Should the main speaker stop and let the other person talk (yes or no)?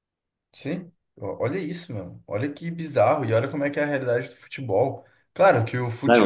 no